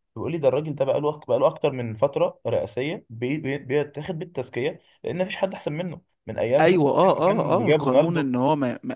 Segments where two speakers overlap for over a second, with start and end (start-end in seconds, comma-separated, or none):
6.6-8.3